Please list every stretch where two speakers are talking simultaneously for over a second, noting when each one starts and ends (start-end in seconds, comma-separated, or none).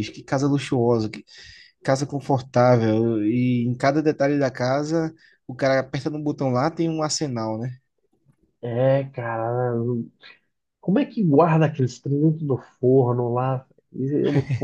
none